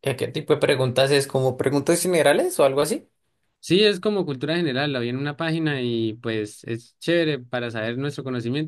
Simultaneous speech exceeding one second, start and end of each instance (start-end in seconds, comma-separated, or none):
none